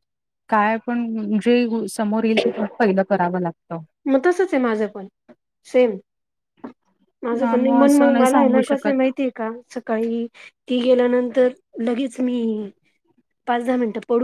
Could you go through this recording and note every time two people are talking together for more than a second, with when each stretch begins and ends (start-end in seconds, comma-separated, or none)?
7.4-9.1